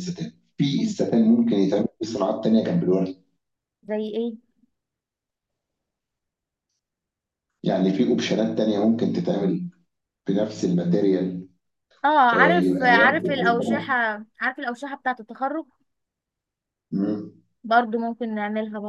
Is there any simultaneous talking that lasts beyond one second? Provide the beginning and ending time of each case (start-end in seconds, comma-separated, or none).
12.3-13.9